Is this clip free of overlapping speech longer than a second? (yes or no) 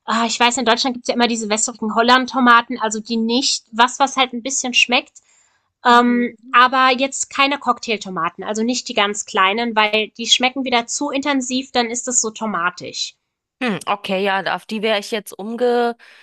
yes